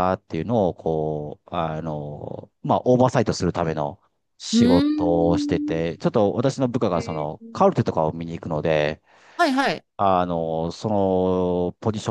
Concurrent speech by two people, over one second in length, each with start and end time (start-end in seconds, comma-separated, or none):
4.5-5.8